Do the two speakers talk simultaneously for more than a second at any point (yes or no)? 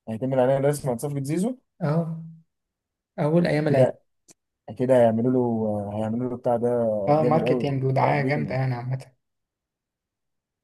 yes